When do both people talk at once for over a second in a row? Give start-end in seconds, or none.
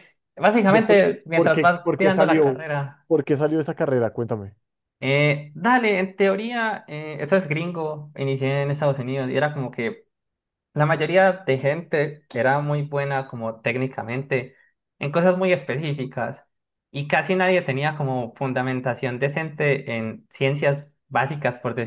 0.7-2.6